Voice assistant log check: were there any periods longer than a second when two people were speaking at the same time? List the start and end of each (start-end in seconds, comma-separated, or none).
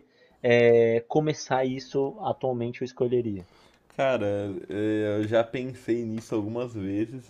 none